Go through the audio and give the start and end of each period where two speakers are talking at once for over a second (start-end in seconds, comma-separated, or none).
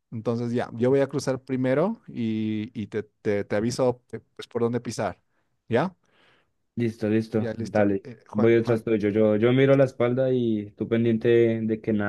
7.3-8.9